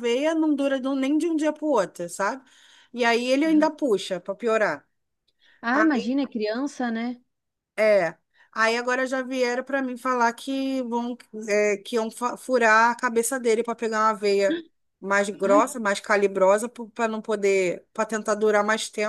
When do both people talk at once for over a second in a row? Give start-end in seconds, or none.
none